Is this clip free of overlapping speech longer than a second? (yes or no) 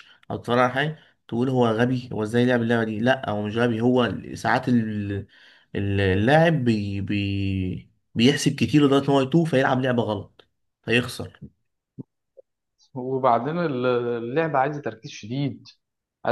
yes